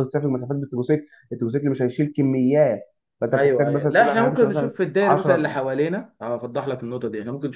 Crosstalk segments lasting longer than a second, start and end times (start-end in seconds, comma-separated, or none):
3.3-5.6